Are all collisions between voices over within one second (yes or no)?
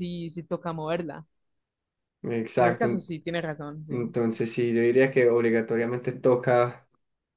yes